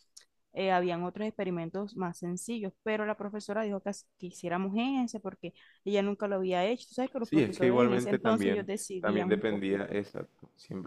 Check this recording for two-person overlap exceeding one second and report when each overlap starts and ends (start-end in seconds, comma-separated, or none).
7.2-10.0